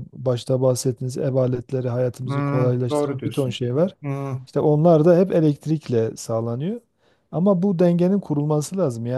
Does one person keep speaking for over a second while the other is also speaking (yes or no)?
yes